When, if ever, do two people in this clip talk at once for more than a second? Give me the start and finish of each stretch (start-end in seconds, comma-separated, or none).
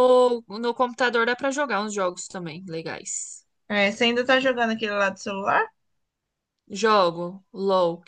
none